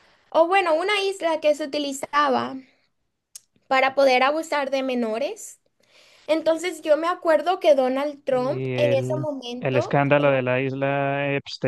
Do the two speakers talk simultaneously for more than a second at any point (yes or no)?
yes